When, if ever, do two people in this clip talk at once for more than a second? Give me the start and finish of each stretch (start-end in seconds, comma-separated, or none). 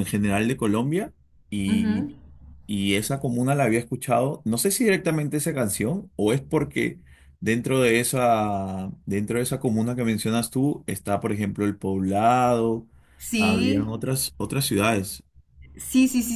none